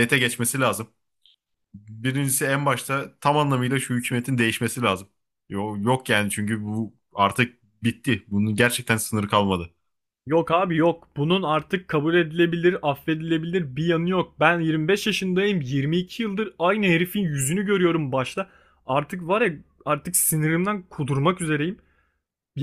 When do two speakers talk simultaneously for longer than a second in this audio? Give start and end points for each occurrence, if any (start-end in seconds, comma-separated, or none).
none